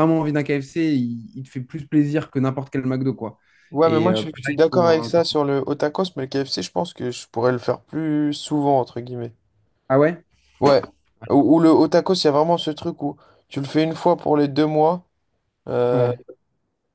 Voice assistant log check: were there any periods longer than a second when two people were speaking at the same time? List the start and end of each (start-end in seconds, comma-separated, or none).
3.8-5.1